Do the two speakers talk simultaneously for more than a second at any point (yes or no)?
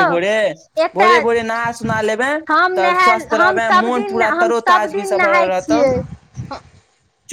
yes